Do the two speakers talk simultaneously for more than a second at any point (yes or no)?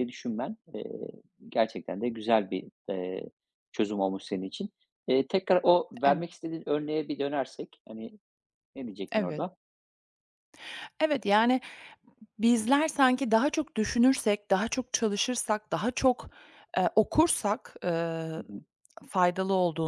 no